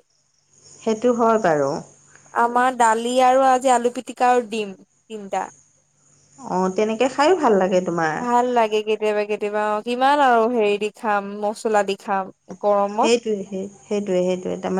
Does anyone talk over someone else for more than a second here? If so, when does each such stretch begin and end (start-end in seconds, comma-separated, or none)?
none